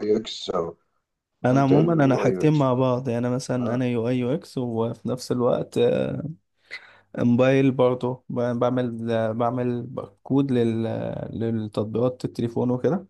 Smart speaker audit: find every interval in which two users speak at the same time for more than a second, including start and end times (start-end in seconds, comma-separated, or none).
1.4-2.7